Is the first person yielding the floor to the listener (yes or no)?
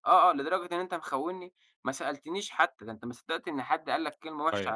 yes